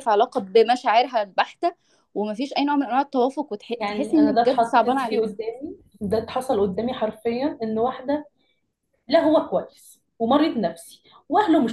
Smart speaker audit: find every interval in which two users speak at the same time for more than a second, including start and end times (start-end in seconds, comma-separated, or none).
3.8-5.3